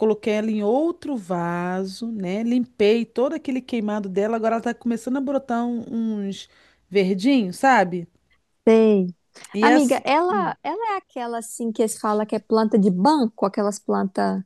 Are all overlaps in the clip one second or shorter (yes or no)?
yes